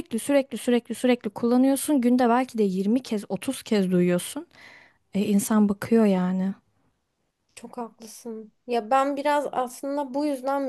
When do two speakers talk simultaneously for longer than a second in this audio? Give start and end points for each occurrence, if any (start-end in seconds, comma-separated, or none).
none